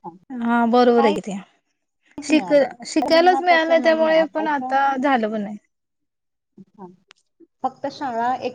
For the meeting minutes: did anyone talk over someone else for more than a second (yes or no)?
yes